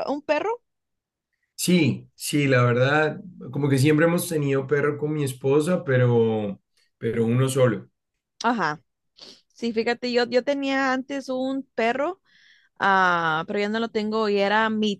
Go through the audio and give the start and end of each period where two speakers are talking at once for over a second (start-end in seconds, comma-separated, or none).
none